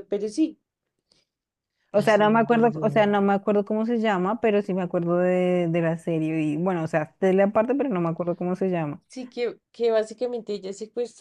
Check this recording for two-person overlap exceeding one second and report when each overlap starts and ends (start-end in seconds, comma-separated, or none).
2.0-3.2